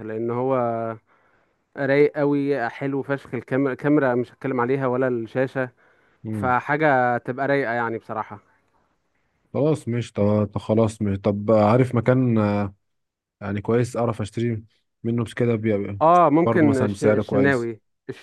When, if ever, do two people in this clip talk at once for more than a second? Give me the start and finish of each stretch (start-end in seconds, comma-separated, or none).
16.4-17.7